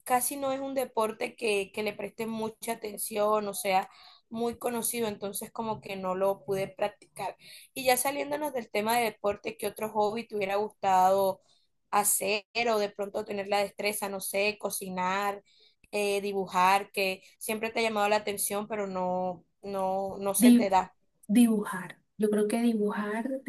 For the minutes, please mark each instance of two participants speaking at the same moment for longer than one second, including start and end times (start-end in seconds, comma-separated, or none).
none